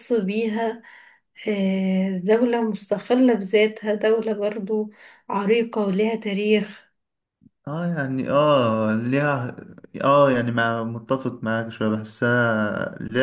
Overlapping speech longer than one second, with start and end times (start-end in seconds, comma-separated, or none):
none